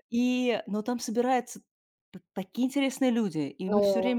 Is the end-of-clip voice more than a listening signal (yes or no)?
no